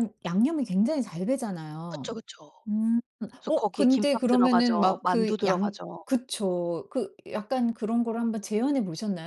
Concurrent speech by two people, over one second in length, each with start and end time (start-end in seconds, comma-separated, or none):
3.5-6.0